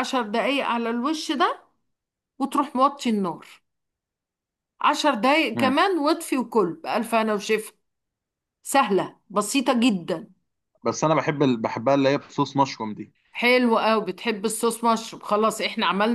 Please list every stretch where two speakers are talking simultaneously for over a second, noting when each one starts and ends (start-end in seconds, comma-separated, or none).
none